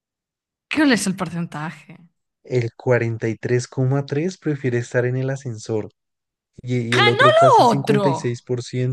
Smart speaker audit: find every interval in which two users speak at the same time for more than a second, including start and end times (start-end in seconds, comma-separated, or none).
6.9-8.4